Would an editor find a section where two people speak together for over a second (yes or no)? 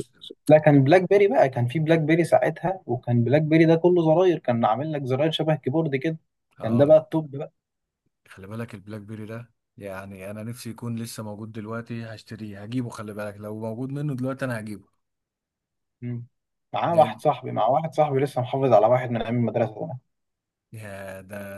no